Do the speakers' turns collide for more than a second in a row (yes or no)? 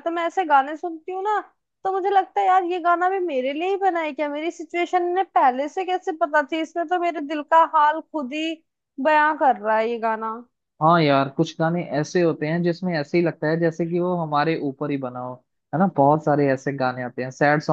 no